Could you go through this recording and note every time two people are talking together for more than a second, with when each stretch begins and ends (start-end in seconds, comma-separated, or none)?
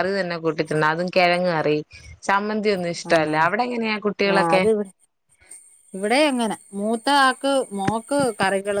none